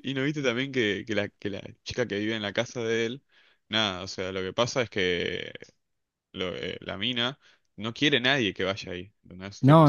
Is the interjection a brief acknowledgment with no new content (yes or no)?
no